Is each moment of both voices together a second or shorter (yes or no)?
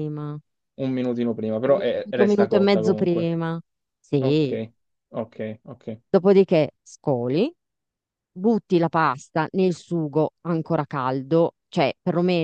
no